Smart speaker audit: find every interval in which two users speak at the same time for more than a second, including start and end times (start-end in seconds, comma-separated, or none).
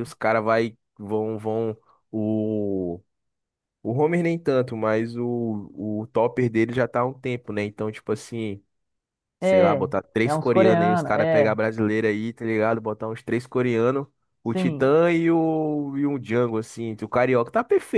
9.4-11.6